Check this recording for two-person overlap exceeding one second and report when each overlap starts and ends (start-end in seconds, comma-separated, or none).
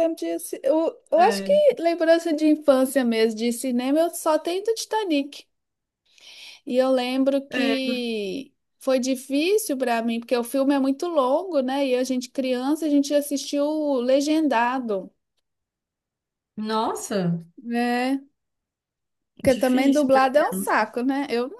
19.4-20.8